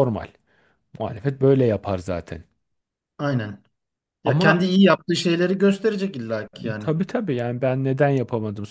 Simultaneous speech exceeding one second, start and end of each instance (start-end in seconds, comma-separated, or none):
none